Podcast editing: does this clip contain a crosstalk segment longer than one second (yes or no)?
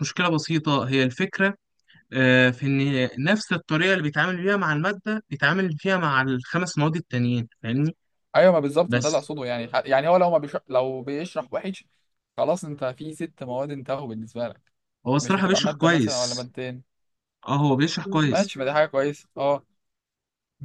yes